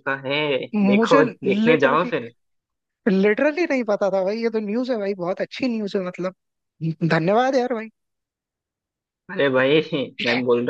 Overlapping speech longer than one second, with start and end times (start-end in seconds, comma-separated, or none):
0.9-2.1